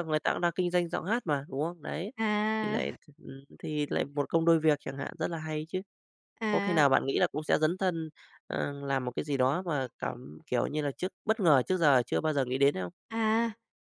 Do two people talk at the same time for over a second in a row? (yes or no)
no